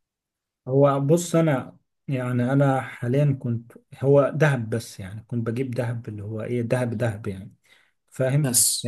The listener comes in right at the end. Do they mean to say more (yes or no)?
no